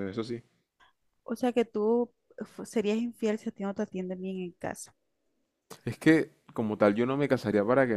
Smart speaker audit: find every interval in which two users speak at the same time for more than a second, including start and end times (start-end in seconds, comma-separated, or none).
none